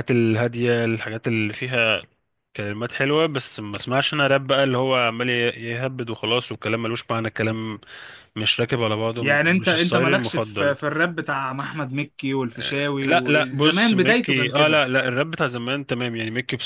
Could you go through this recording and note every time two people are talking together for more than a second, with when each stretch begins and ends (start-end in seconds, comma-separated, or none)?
9.2-10.8, 13.0-14.8